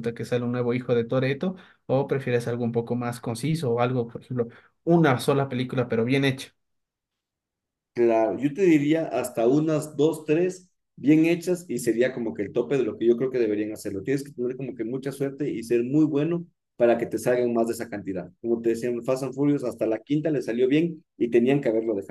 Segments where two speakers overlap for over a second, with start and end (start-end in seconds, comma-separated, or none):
none